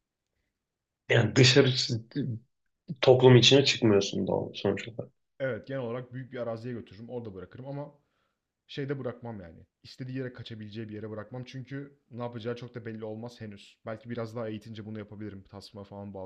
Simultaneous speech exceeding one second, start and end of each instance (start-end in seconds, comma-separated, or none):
none